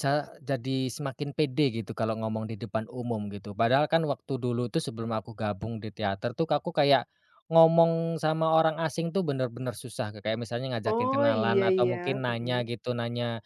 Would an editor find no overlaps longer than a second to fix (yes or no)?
no